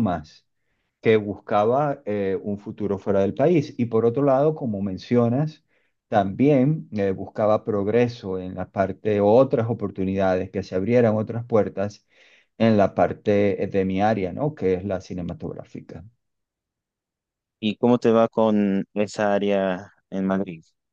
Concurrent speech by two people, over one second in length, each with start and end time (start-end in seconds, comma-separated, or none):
none